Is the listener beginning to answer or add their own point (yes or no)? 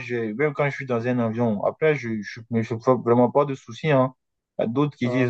no